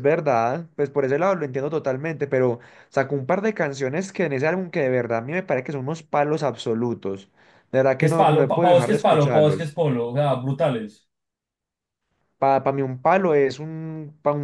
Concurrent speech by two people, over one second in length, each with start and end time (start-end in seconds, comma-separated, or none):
8.0-9.7